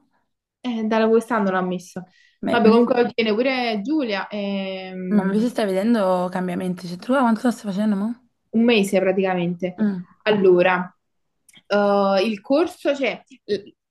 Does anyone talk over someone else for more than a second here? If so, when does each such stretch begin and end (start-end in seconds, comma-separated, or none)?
none